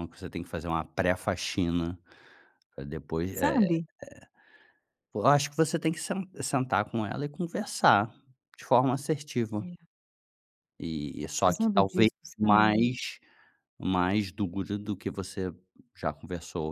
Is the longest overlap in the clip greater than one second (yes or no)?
yes